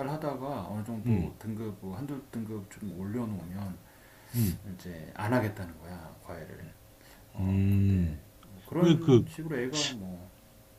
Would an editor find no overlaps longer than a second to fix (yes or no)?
yes